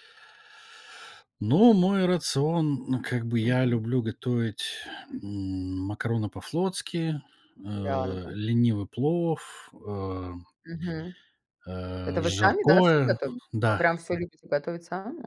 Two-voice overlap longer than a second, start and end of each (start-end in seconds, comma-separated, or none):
12.0-13.8